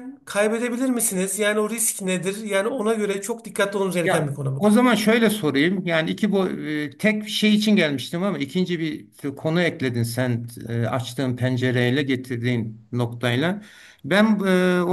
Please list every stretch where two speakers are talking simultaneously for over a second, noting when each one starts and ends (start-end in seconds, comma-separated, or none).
none